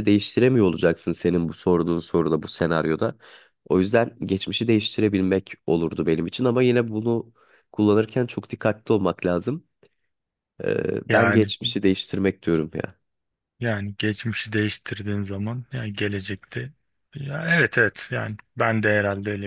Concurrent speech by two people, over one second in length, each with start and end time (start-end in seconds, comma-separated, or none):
none